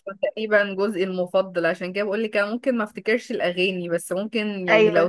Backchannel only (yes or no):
yes